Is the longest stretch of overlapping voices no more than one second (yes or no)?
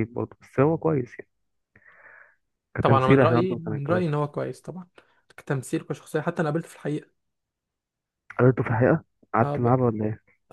no